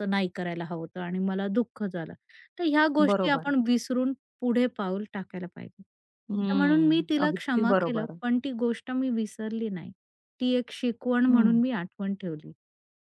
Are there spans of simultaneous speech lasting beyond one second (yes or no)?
yes